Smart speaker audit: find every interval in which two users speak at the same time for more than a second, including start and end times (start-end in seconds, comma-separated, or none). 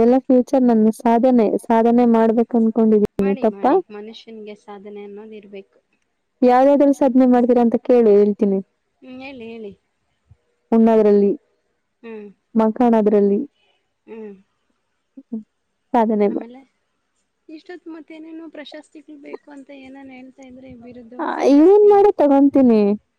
none